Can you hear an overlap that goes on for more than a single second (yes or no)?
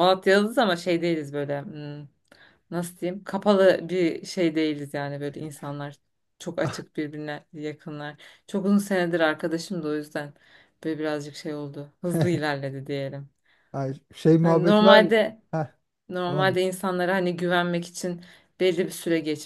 no